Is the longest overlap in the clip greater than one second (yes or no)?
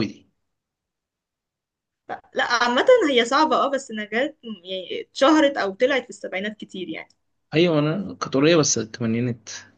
no